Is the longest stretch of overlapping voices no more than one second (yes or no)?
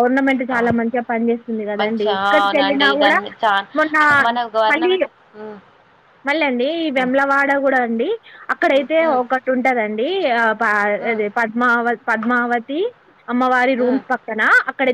no